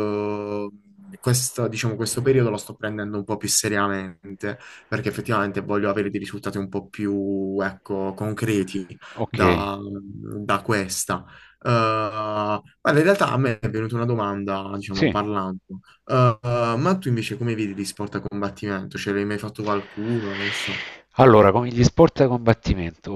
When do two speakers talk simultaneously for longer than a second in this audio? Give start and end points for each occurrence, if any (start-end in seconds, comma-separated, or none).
none